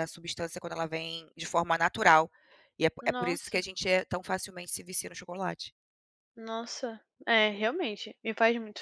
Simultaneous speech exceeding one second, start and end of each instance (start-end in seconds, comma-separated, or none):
none